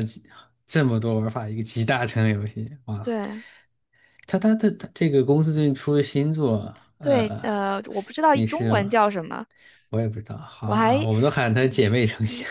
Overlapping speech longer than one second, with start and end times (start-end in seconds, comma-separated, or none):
none